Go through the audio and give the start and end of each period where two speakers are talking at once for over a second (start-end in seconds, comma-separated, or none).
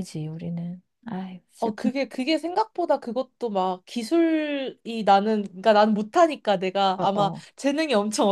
none